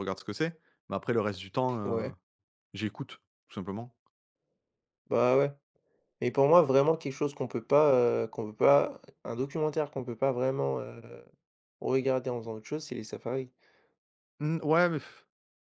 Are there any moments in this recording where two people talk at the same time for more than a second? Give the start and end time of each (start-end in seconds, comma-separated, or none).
none